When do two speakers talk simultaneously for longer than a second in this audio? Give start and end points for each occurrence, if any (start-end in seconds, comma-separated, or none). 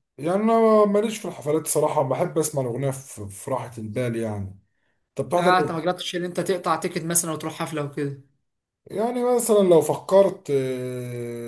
none